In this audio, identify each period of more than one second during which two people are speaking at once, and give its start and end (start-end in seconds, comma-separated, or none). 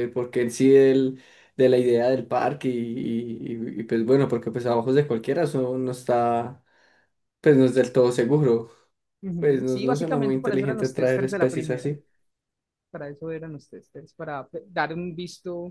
9.4-11.9